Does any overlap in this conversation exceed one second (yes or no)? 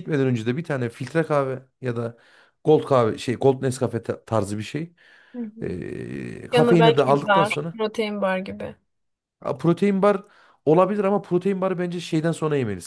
yes